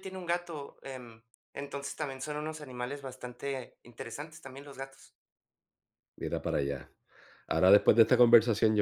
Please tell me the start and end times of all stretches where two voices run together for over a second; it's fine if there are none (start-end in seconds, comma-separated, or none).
none